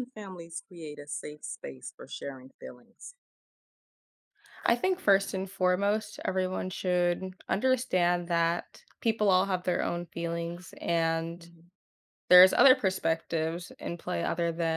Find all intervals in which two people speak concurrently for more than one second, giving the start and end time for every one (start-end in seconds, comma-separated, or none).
none